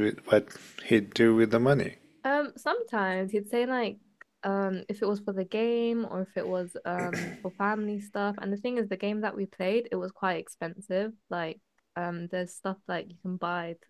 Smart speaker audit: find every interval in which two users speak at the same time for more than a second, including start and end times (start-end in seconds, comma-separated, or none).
none